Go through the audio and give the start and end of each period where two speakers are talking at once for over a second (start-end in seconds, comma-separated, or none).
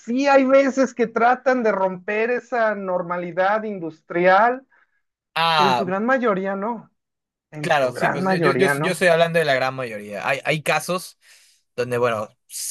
7.6-9.0